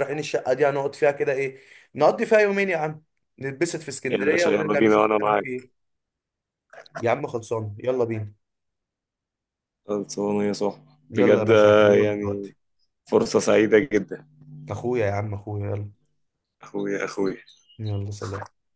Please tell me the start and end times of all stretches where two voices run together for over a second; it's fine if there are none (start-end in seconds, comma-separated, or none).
4.1-5.6, 11.1-12.5